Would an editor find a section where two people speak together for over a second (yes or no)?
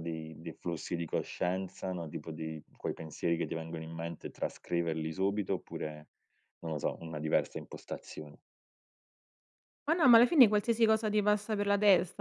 no